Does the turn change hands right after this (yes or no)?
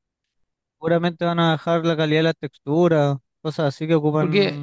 yes